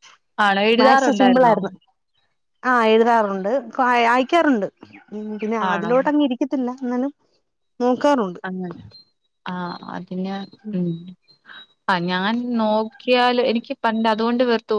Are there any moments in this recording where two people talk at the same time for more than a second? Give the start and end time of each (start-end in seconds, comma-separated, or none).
none